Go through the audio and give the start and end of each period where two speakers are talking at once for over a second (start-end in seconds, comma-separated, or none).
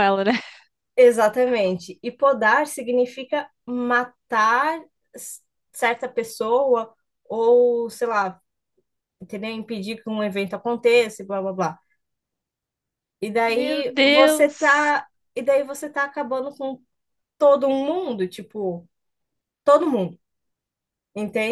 13.5-14.9